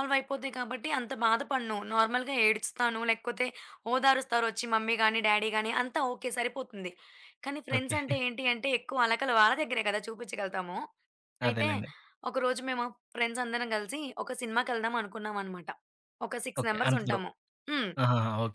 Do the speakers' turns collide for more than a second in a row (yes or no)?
no